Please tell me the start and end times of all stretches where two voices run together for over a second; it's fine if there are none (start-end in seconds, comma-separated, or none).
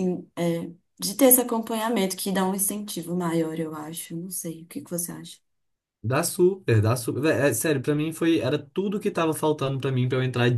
none